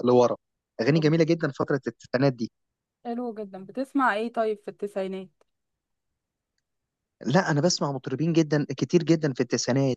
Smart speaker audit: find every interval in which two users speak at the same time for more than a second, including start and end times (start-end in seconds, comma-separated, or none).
none